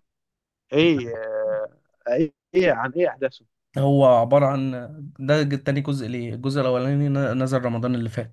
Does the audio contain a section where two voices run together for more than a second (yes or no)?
no